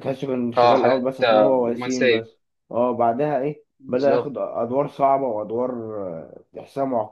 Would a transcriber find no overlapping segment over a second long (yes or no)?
no